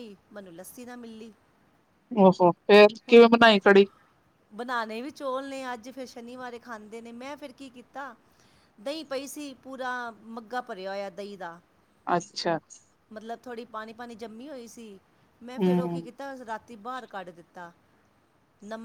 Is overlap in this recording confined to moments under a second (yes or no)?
yes